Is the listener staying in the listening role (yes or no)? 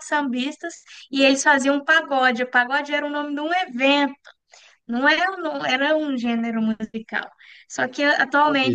yes